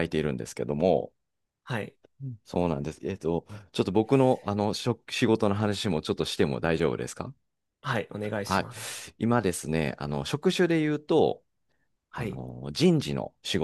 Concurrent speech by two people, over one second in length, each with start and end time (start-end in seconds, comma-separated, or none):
none